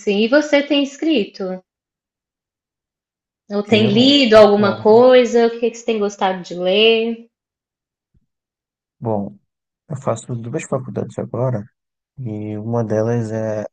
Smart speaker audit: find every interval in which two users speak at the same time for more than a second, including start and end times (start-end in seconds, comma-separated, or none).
3.8-5.1